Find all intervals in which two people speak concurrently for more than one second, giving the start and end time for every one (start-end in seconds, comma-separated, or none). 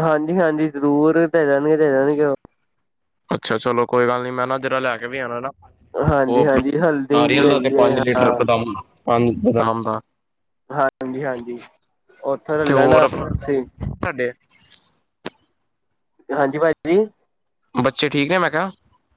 6.3-8.4